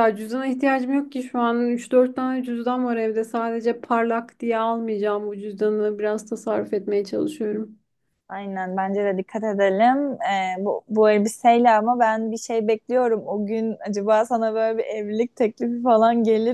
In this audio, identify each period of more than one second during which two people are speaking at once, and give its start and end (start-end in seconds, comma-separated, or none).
none